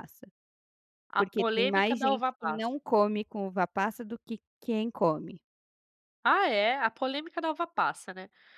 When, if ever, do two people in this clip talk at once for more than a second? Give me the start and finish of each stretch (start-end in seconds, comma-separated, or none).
1.2-2.7